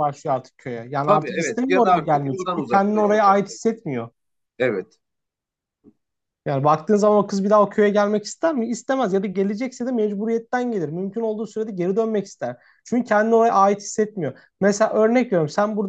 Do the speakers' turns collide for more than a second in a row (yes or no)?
yes